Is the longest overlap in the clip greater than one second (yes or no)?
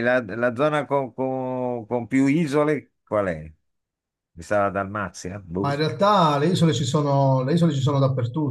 no